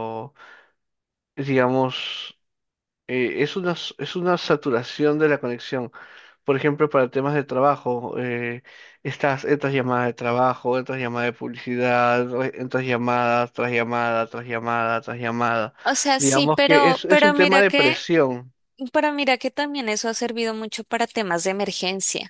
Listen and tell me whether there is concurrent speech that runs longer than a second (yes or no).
yes